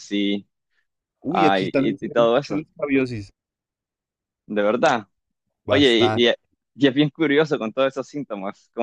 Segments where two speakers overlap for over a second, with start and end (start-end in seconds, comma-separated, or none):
1.3-2.6